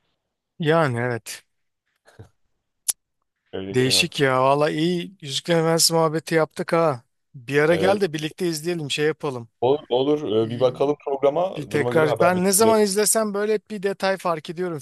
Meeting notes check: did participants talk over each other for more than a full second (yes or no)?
yes